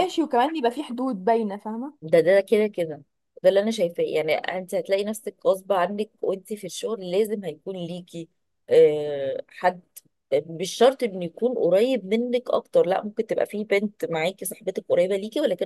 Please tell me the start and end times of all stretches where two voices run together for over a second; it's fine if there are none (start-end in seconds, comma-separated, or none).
none